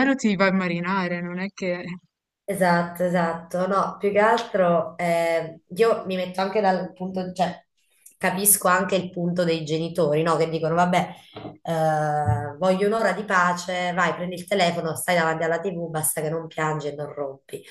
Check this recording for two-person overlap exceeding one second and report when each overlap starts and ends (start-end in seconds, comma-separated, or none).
none